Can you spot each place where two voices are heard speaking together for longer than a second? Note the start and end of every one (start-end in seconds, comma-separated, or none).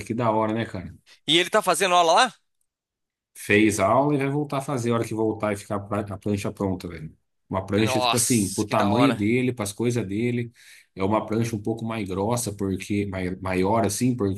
7.8-9.2